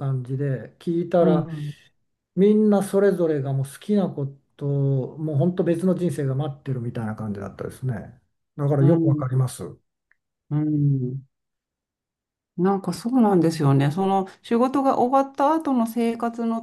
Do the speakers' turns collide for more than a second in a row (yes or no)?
no